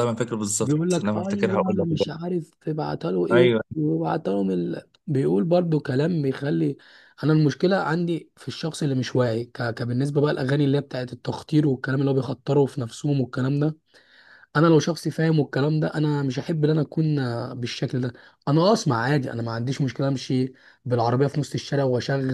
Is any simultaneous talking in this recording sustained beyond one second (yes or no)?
yes